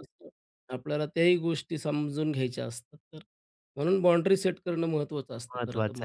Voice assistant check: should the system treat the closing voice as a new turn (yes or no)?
yes